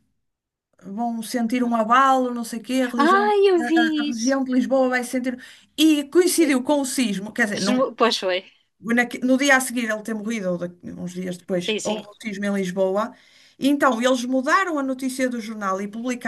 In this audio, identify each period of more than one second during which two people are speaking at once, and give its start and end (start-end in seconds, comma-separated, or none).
none